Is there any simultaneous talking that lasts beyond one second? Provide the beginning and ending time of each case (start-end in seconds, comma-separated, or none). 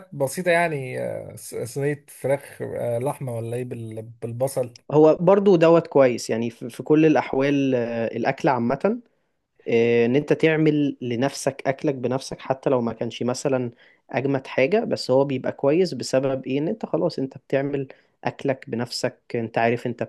none